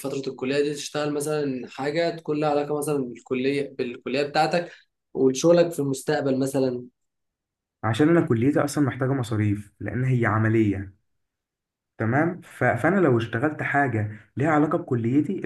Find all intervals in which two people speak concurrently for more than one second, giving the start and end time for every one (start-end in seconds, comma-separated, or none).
none